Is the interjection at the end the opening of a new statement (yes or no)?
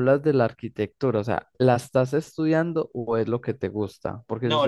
yes